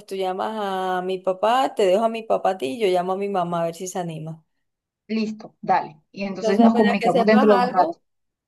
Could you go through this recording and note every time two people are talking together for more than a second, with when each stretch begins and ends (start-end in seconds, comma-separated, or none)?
6.3-8.0